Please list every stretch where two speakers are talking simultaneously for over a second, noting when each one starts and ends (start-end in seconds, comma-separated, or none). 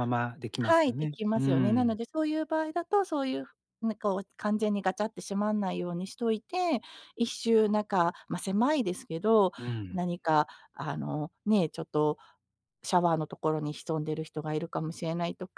0.6-2.0